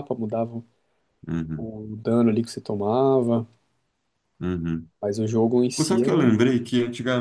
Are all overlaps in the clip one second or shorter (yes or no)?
yes